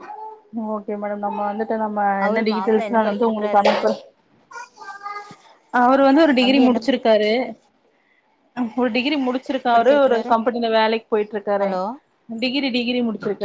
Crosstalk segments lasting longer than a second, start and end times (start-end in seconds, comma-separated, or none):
2.3-3.7